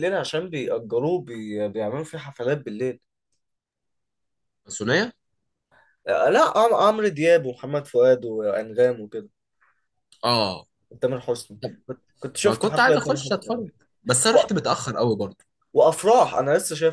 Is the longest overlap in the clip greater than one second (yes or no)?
yes